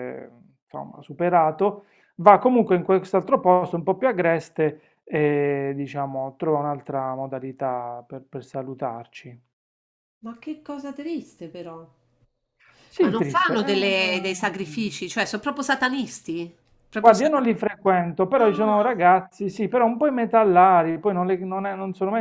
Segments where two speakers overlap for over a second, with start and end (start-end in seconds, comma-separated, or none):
13.0-15.0